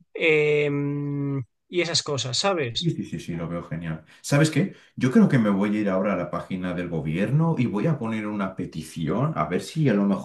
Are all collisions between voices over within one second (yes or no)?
yes